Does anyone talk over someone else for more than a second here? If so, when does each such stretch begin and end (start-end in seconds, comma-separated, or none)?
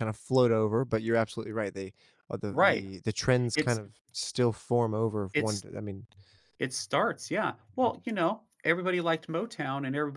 none